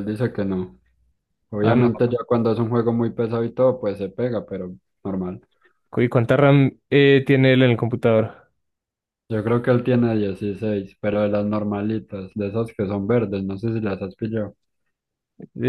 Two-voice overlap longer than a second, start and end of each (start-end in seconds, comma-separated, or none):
none